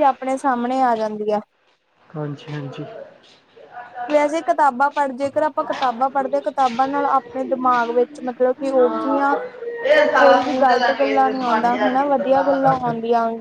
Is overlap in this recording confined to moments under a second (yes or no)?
no